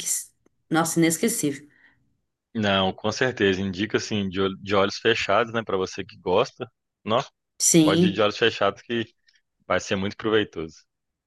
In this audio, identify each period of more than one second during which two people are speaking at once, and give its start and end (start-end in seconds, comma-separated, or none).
none